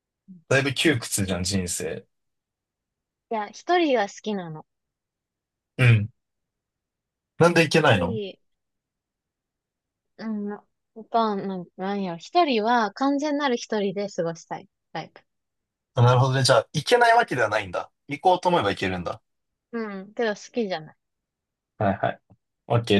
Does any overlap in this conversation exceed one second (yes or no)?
no